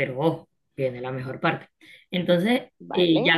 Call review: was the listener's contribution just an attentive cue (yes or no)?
yes